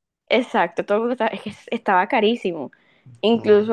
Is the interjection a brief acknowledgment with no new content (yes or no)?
yes